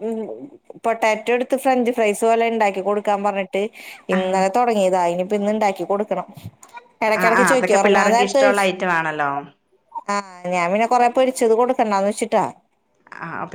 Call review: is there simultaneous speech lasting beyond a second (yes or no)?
yes